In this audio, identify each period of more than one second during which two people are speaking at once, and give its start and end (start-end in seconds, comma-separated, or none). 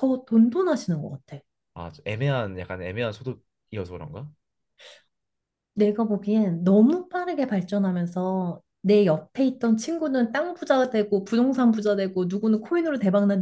none